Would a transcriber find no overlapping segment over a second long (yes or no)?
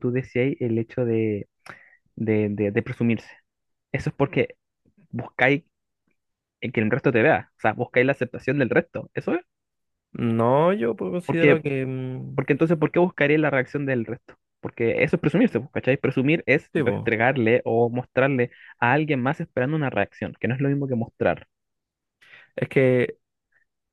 yes